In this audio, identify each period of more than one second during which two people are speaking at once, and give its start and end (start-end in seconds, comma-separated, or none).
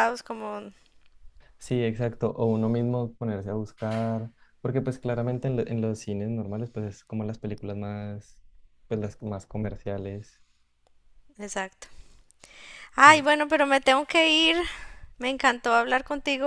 none